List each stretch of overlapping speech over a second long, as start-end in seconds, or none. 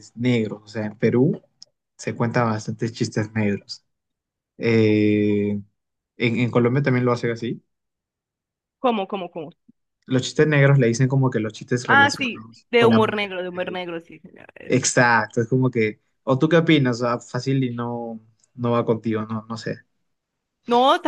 11.8-13.3